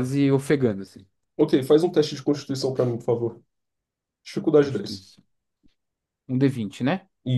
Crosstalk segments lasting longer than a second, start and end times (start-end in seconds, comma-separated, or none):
none